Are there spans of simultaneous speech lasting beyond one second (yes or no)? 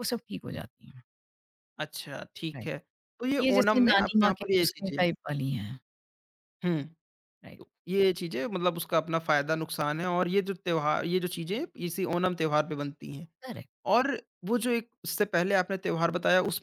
yes